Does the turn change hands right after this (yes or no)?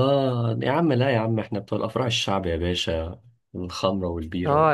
yes